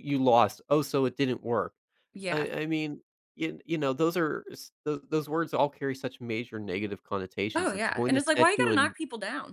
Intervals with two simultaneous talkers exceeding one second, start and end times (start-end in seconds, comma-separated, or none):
7.5-8.9